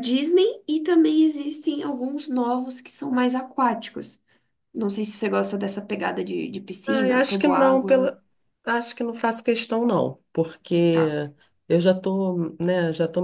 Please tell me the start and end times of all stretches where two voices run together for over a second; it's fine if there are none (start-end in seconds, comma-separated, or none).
6.9-8.2